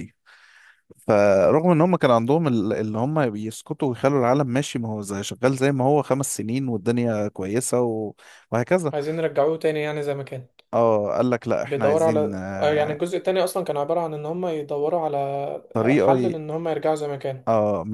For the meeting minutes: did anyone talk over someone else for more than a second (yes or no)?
yes